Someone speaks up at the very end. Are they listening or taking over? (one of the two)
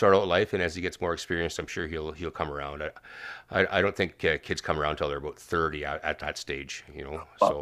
taking over